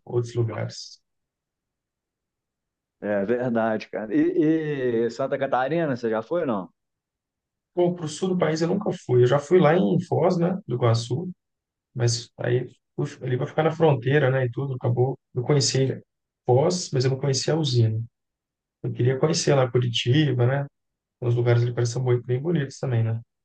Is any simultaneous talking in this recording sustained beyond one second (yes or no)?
no